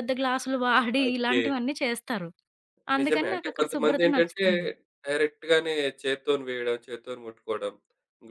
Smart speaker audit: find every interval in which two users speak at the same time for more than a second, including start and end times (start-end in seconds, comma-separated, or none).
3.0-4.5